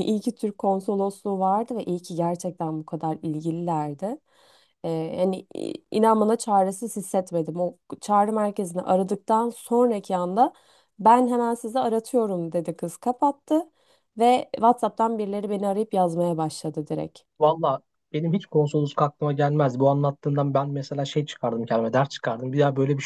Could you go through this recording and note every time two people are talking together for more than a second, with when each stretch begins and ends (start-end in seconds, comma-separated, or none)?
none